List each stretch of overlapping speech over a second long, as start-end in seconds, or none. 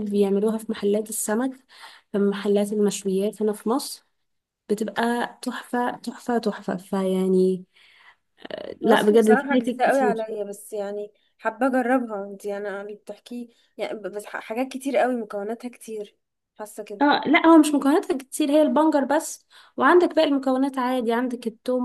8.8-10.3